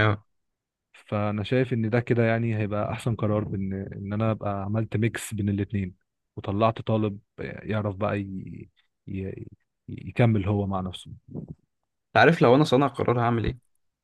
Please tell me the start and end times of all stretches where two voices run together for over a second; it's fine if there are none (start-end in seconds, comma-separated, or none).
none